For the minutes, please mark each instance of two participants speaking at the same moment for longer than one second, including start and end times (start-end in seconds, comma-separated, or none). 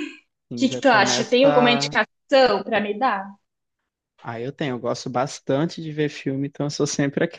0.5-2.0